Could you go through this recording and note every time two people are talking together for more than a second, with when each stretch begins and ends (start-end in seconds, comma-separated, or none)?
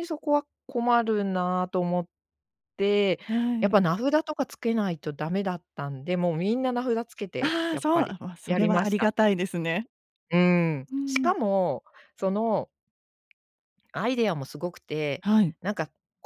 7.4-9.1